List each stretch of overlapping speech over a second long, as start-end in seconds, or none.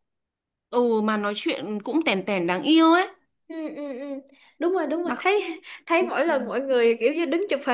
none